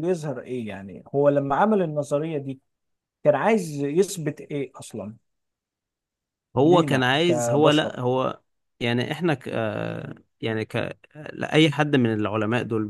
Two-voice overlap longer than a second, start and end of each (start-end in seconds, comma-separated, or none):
6.6-8.0